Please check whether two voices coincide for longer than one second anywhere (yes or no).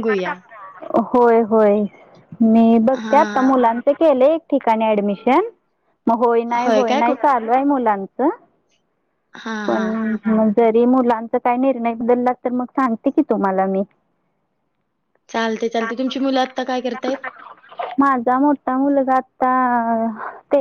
no